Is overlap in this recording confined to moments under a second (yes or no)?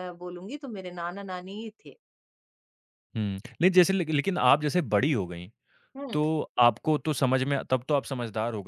yes